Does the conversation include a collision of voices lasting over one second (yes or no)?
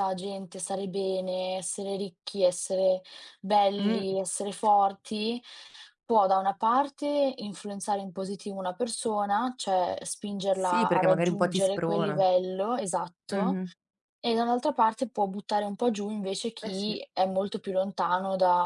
yes